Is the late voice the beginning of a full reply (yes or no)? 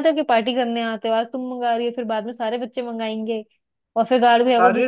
no